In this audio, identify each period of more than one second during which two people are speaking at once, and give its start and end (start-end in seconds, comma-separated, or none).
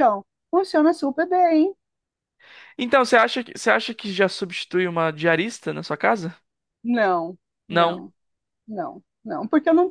none